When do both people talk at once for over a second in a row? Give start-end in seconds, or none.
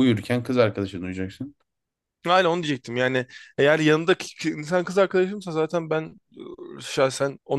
none